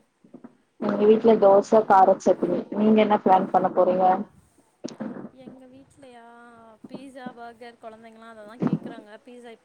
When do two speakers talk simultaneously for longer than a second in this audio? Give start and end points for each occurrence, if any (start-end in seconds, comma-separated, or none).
none